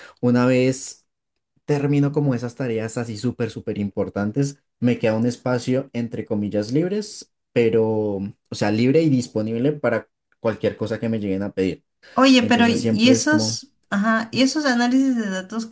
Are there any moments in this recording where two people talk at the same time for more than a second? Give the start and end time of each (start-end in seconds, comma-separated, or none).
12.4-13.6